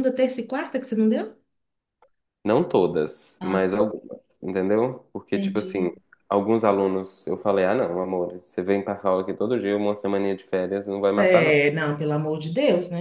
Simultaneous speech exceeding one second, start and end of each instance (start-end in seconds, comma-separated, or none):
none